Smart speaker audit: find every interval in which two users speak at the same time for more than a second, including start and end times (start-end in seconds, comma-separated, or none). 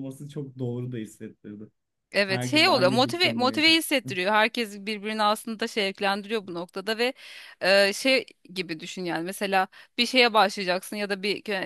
2.3-3.8